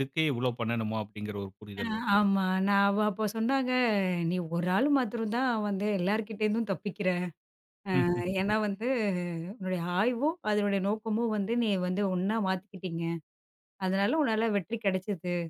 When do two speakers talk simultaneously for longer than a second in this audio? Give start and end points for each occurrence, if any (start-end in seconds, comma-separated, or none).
none